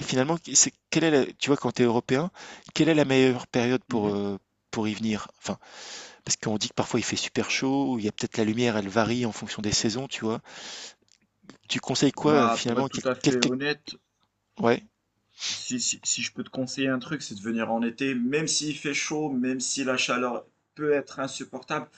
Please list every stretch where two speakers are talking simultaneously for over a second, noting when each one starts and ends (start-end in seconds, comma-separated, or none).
12.2-13.5